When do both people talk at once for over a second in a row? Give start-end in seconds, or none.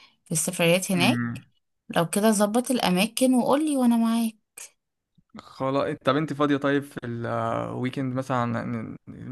none